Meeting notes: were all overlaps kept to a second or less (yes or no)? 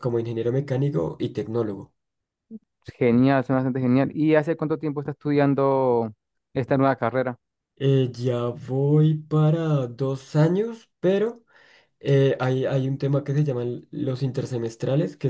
yes